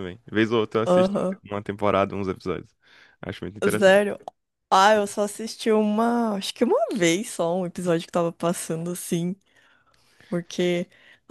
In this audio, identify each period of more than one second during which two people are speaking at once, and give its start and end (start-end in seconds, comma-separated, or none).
none